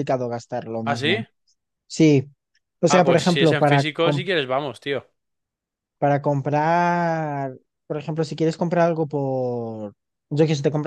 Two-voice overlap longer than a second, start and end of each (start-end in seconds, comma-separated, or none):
2.9-4.2